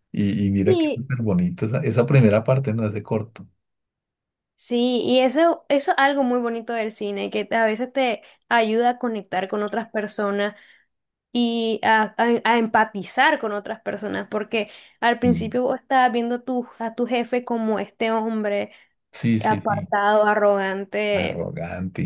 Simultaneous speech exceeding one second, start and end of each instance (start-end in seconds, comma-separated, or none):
none